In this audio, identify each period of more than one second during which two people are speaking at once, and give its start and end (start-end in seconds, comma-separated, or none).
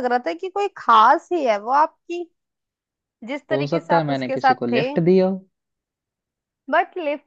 3.5-4.8